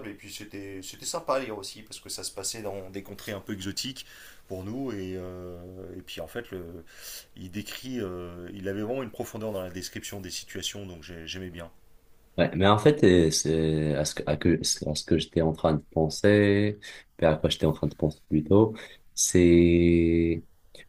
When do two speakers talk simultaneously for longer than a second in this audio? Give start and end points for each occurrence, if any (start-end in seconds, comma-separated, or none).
none